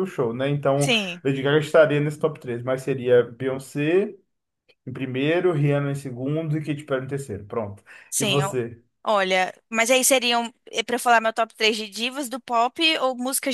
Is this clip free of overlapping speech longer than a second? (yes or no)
yes